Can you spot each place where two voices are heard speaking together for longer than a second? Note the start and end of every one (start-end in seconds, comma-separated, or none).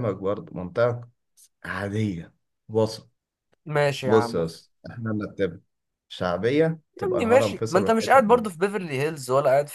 7.0-8.4